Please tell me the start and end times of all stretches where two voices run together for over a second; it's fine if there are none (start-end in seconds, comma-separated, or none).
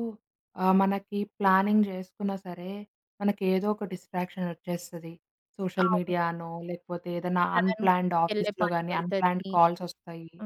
7.5-9.5